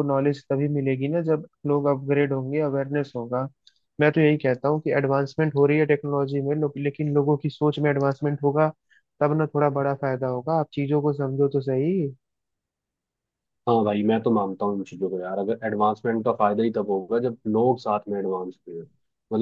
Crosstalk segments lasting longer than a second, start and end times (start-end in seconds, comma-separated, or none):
none